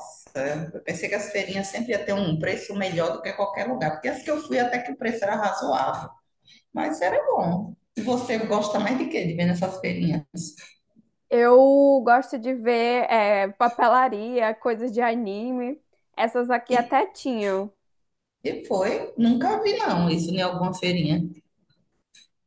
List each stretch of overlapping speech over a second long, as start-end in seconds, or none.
none